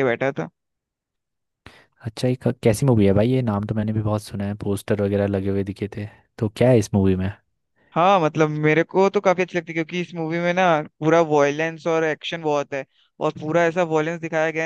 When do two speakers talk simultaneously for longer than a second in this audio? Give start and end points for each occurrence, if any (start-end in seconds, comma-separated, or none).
none